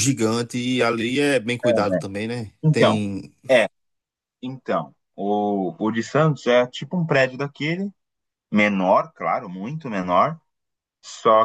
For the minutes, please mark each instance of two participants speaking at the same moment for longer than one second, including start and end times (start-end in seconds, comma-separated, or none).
none